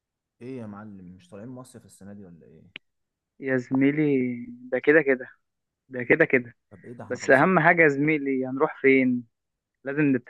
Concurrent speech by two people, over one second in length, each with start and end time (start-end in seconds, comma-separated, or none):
none